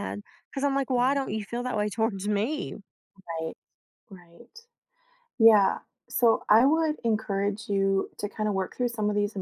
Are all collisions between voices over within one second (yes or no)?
yes